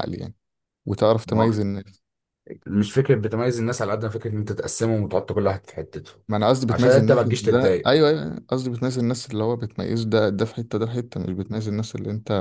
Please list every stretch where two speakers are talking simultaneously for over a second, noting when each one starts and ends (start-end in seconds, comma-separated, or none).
6.7-7.9